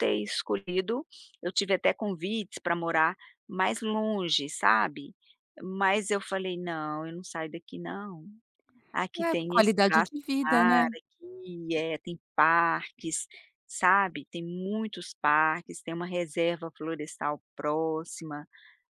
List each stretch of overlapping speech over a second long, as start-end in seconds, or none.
9.2-10.9